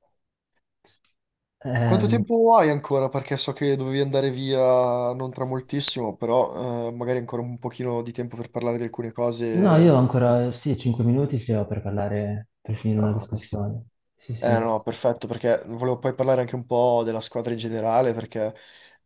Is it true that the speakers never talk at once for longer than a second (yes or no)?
yes